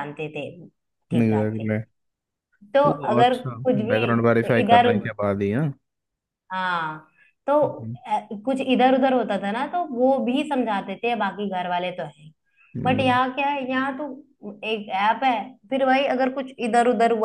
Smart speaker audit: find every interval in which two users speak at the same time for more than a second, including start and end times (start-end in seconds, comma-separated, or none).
2.9-4.9